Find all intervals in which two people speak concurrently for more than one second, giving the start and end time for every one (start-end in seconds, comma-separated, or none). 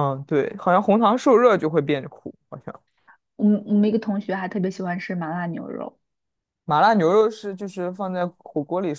none